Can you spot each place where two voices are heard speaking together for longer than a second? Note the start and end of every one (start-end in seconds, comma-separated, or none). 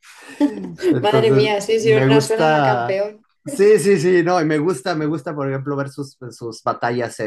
1.0-3.0